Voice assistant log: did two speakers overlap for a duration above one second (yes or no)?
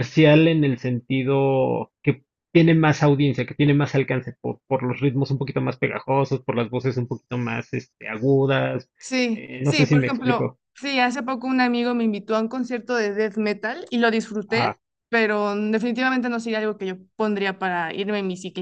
yes